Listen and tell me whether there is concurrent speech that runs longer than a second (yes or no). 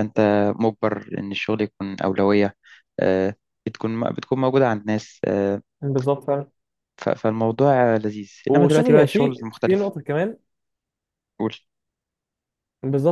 yes